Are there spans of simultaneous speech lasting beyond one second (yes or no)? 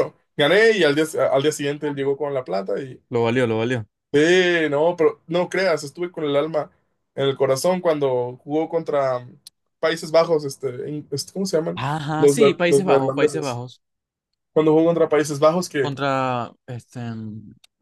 yes